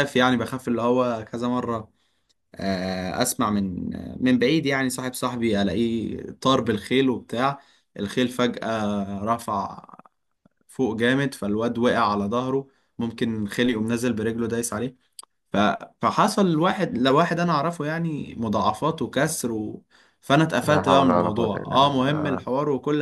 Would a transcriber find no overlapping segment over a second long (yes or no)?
no